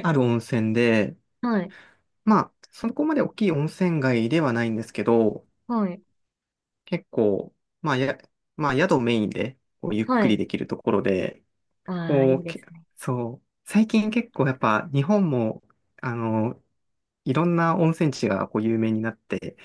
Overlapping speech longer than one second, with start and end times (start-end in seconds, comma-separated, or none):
none